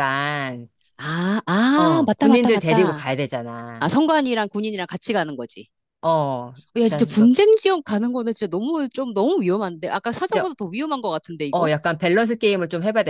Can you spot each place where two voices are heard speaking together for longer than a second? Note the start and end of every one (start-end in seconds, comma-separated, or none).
1.7-3.0